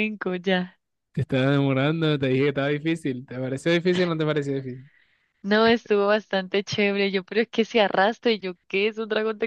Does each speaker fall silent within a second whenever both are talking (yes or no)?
yes